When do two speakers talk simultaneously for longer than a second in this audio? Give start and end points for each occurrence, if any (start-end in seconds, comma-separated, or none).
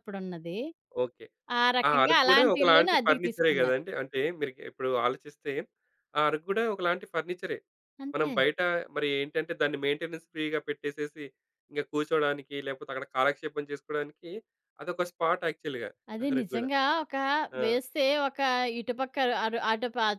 1.9-3.8